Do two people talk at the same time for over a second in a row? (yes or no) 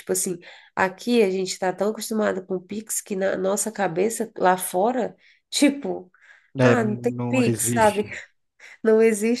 yes